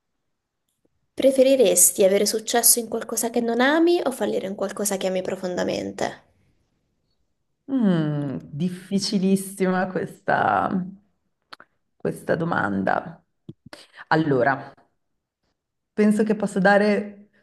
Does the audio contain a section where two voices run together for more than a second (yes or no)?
no